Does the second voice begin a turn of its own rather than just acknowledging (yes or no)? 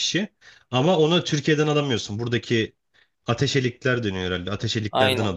yes